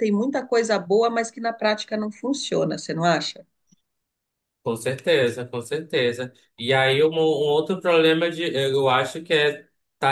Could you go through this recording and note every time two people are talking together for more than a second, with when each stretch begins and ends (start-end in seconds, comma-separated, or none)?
none